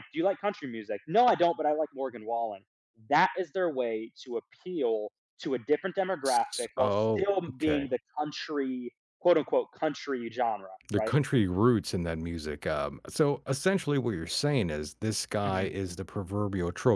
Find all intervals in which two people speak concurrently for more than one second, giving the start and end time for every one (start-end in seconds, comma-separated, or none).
6.2-7.8